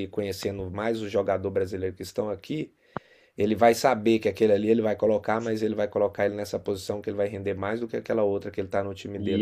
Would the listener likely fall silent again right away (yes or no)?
no